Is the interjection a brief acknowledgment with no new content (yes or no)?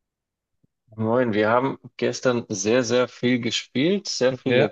yes